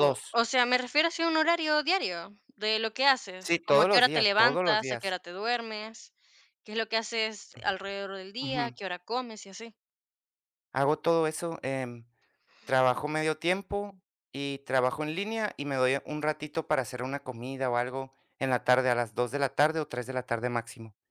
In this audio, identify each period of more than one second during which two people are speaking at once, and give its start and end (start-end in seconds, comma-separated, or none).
3.4-5.2